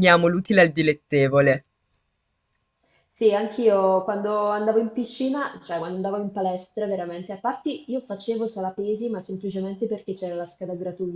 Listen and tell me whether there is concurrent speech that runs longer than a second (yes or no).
no